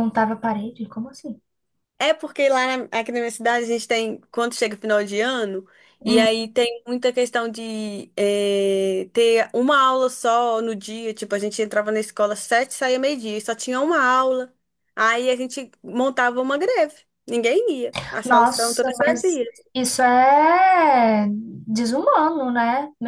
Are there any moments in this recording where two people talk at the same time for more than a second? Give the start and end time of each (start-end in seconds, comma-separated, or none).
18.2-19.6